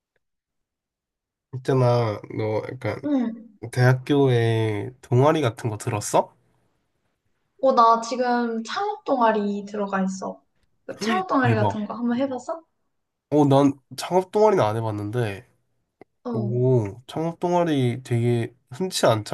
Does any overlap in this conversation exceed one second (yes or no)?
no